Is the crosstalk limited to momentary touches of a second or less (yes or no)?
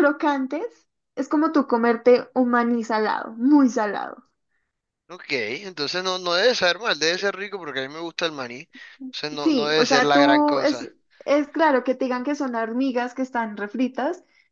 no